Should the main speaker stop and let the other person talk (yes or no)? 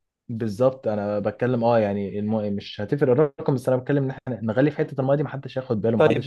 yes